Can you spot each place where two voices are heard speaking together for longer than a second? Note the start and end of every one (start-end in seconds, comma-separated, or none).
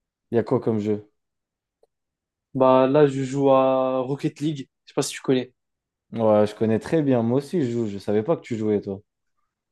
none